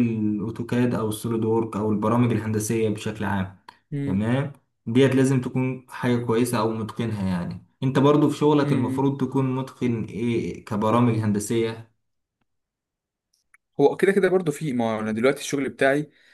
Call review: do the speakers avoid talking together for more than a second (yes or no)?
yes